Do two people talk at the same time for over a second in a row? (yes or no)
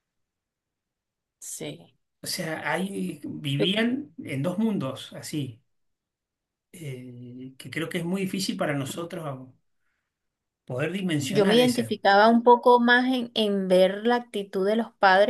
no